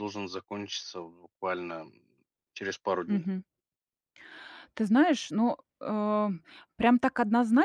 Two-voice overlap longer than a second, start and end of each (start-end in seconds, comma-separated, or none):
none